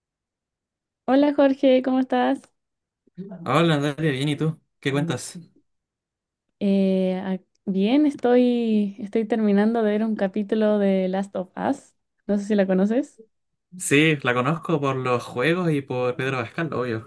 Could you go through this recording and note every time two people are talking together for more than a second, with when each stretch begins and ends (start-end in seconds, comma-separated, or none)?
none